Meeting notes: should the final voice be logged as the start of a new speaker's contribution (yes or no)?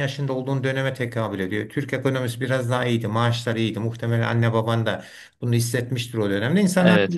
no